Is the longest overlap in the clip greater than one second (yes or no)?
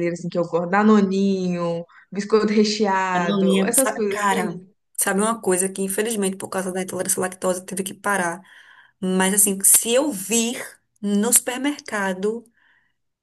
yes